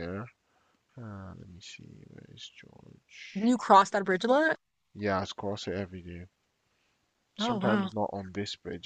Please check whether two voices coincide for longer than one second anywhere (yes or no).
no